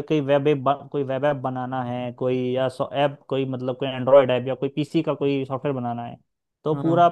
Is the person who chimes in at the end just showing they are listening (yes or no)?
yes